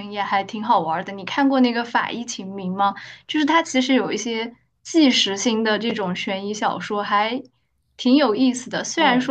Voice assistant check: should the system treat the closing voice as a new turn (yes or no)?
no